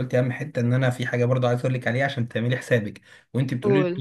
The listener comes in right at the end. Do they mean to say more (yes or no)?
no